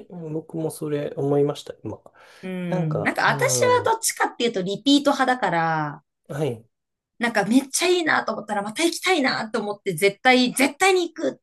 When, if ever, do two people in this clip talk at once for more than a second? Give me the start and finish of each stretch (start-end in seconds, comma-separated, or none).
2.7-4.0